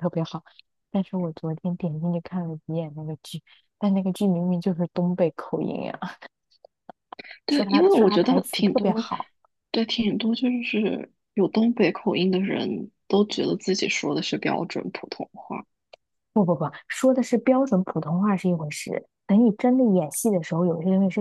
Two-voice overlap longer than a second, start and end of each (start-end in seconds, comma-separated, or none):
7.5-9.1